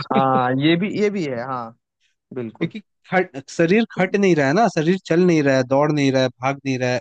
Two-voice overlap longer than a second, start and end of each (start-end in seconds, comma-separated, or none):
none